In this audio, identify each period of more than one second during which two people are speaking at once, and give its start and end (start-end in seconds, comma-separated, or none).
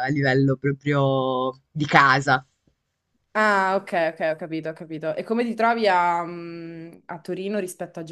none